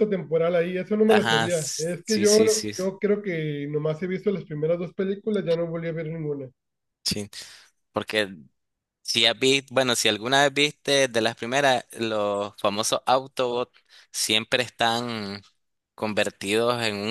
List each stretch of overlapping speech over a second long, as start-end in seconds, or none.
1.1-2.4